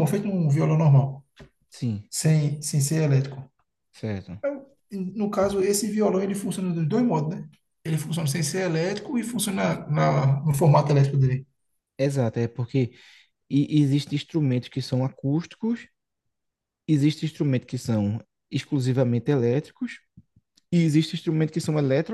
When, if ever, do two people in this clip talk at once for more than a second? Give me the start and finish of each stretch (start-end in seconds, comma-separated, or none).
none